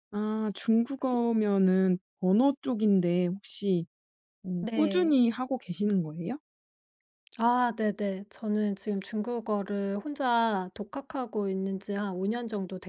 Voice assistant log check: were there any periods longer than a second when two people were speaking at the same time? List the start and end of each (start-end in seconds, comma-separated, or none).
none